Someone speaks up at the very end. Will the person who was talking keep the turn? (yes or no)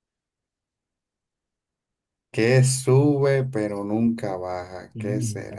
yes